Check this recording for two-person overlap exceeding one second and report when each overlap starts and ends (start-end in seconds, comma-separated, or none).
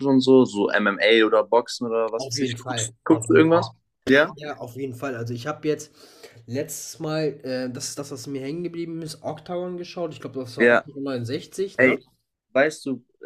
2.2-3.7